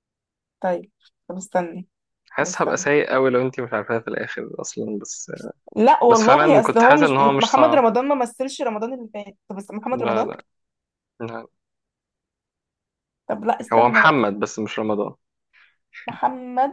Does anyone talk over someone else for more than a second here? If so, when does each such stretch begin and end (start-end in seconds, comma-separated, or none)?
6.1-7.8